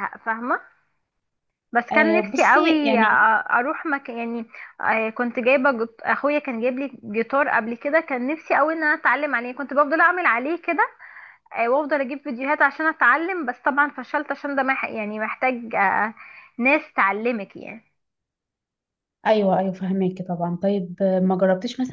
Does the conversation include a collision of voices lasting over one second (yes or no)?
yes